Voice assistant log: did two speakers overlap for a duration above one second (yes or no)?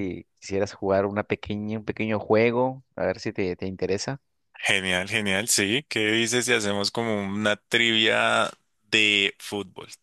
no